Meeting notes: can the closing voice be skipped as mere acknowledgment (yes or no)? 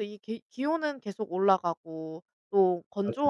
yes